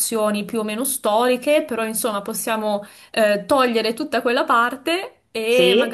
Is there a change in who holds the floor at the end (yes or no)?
no